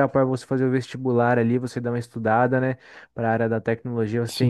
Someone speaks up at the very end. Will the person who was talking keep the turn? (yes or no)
yes